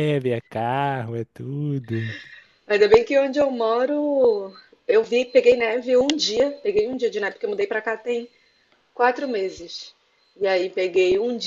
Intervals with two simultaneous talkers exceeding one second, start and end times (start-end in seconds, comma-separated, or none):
none